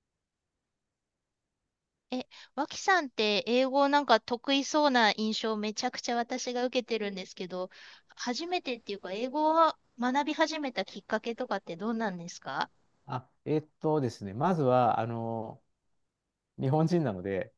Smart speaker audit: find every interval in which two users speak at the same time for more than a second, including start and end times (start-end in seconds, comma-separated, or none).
none